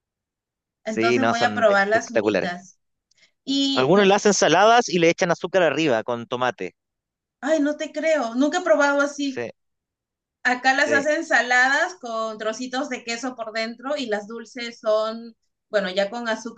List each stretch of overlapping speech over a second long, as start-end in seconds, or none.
0.8-2.5